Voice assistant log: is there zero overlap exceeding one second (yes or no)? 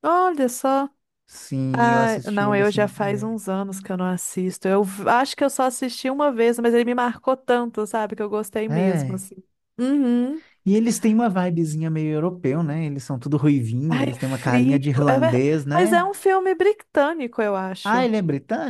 no